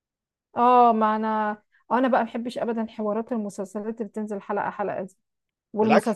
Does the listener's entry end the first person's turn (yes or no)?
no